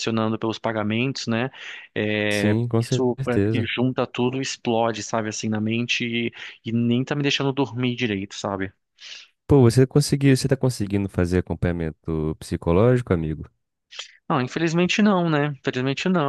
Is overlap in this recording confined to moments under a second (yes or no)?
no